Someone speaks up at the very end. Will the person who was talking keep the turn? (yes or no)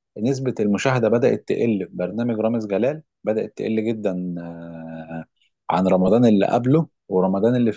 yes